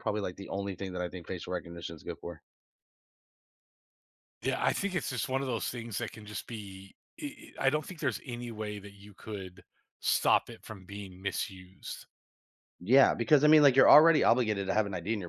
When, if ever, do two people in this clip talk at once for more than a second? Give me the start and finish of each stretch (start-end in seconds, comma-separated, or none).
none